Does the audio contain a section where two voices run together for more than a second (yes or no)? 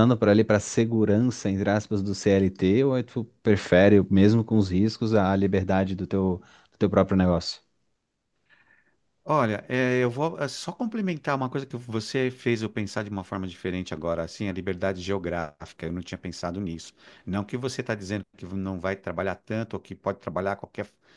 no